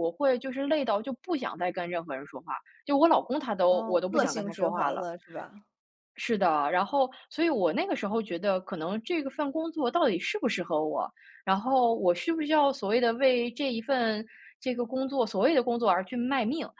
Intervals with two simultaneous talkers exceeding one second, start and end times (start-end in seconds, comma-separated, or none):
3.7-5.1